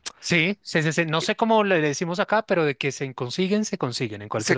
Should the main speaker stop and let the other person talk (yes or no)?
yes